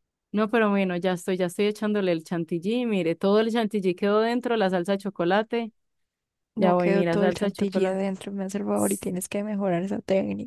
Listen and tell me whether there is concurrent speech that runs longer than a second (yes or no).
yes